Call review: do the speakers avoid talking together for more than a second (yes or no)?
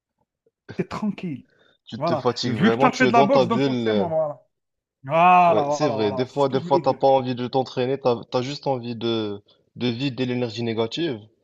no